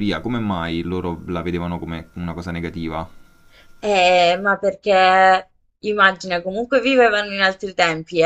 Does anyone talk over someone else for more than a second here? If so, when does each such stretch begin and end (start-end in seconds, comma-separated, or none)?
none